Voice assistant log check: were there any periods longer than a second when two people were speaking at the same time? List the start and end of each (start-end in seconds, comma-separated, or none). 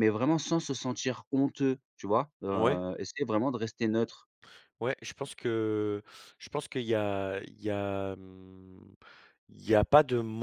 none